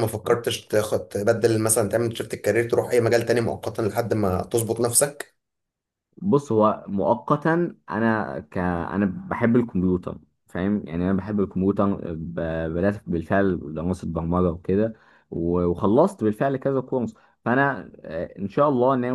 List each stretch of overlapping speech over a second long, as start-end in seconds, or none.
none